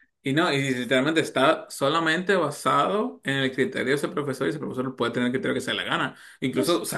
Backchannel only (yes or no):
no